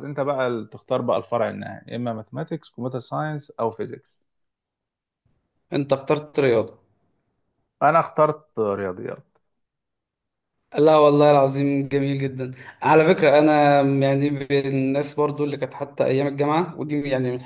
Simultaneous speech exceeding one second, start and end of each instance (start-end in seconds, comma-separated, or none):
none